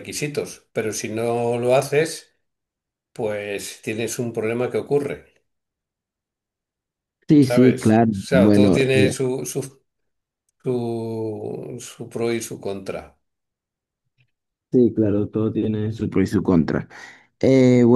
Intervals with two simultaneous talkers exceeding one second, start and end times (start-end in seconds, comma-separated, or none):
7.4-9.2